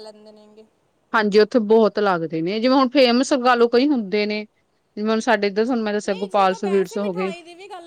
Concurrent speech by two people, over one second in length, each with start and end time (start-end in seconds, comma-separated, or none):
6.0-7.3